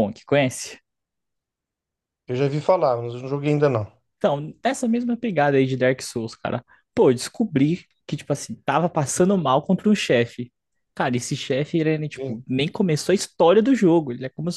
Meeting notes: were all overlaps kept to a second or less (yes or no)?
yes